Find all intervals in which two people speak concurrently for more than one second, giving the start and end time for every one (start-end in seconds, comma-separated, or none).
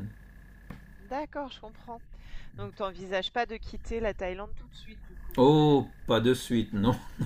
none